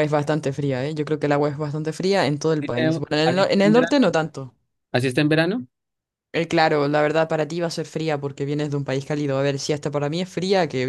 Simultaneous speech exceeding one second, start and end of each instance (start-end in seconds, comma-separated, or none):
2.6-4.0